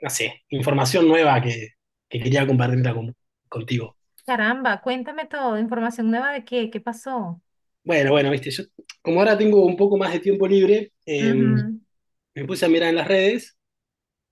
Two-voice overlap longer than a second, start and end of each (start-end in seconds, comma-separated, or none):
none